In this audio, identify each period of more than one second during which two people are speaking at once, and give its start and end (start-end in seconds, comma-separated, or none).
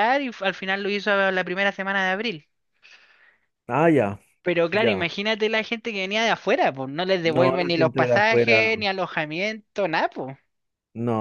7.2-8.7